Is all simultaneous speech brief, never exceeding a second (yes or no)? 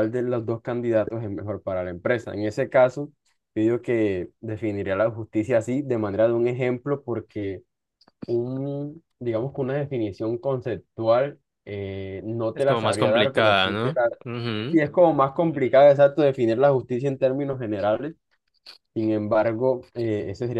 no